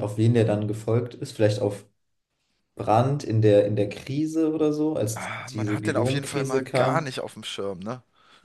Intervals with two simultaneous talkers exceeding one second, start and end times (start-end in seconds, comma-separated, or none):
5.1-7.1